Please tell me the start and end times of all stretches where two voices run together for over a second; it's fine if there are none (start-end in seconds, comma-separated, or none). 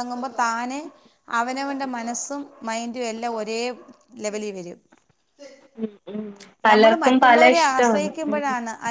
6.7-8.3